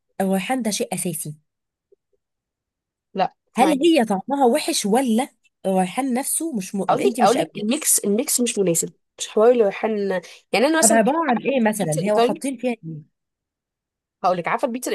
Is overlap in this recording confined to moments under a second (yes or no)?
no